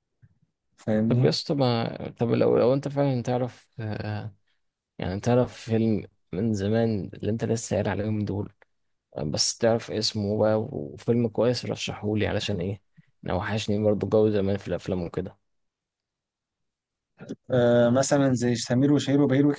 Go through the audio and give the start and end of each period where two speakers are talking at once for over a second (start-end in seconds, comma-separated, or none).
none